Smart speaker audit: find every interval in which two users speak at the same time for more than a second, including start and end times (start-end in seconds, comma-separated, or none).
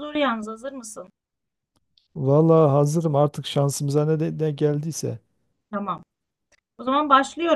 none